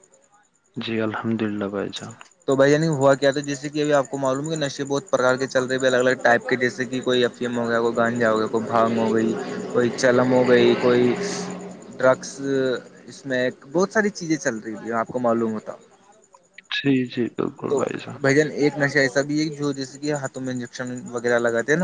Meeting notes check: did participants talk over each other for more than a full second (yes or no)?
no